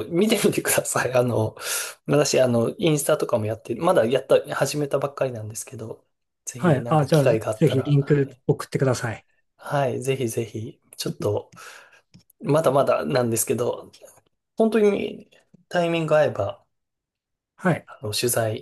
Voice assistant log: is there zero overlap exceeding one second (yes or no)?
no